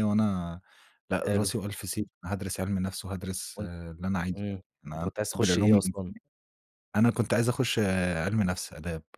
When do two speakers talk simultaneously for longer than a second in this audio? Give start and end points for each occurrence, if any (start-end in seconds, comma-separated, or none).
4.4-6.1